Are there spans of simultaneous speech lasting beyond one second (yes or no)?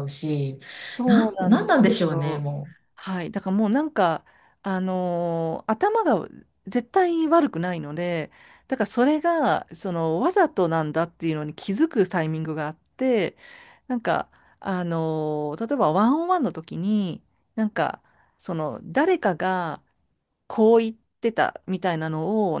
yes